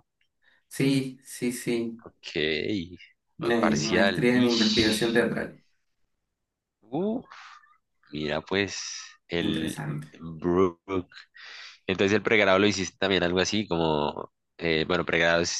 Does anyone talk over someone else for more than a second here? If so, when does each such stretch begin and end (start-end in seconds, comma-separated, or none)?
3.6-5.2